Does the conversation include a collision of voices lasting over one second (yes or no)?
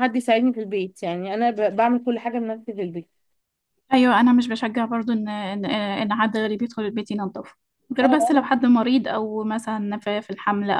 no